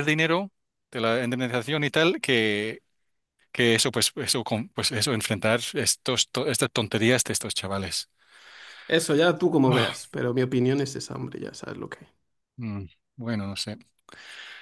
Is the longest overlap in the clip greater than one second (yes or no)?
no